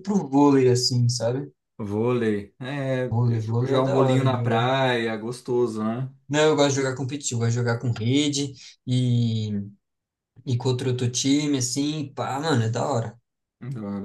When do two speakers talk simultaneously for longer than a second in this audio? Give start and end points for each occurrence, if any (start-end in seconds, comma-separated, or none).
3.1-4.7